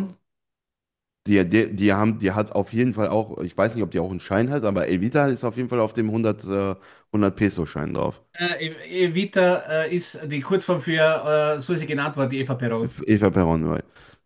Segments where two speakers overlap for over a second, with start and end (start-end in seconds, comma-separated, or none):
none